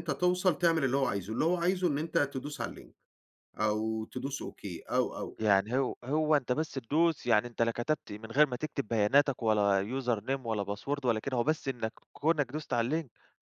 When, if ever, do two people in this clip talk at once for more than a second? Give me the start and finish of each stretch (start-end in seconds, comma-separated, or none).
none